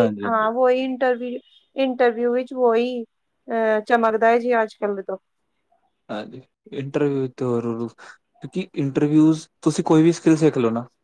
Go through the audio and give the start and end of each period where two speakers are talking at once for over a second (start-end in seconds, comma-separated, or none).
none